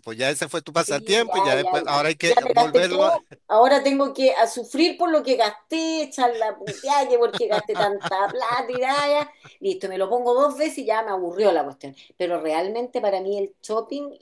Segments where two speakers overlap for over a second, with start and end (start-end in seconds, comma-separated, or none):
0.9-3.2